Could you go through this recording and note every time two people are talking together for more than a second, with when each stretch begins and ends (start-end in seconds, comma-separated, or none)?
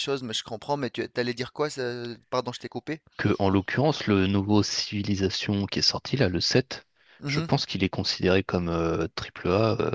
none